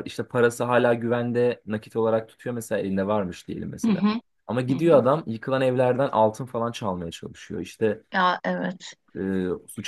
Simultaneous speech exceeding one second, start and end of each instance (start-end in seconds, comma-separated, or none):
none